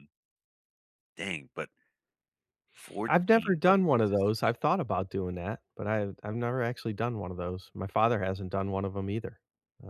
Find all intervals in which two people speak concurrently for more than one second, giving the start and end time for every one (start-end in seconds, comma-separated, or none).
3.1-4.5